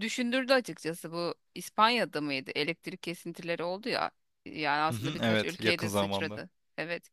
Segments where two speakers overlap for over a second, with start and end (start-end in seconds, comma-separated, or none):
4.9-6.4